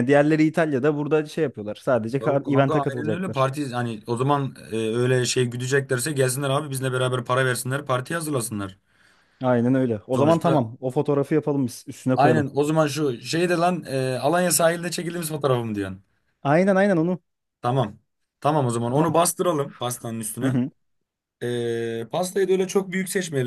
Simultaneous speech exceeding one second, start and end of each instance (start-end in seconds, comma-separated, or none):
2.2-3.5